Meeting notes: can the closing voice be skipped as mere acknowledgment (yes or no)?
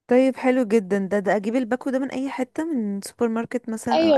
no